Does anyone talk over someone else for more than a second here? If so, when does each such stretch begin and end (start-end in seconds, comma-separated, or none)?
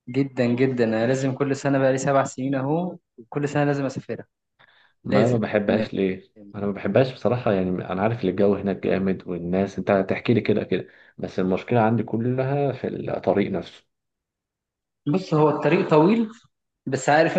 none